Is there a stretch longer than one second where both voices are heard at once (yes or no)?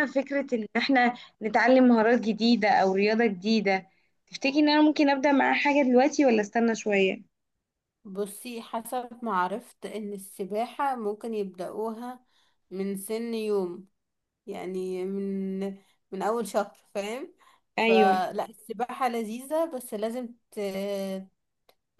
no